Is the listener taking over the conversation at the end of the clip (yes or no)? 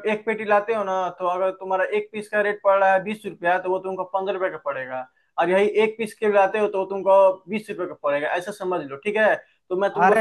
yes